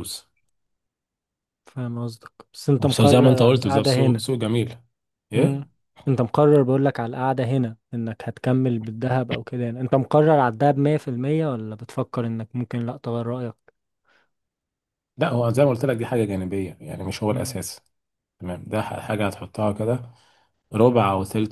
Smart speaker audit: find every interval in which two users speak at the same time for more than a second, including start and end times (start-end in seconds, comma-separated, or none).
2.8-4.2